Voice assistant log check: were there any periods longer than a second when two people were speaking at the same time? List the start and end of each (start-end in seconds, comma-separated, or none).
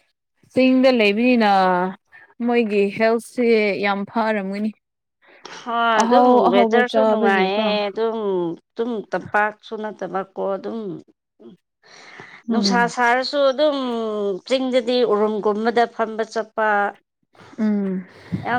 6.0-7.7